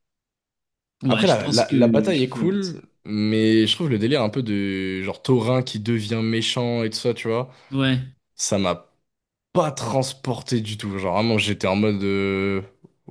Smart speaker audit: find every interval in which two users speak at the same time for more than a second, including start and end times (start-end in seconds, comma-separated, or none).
1.1-2.6